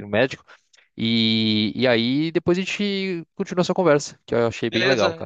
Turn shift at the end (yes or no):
yes